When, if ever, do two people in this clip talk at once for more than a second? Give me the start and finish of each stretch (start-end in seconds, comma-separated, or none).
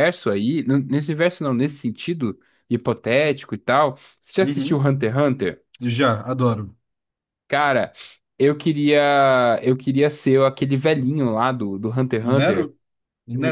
none